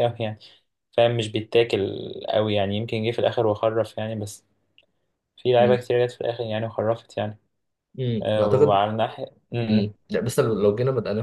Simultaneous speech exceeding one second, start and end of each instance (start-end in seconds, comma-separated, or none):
none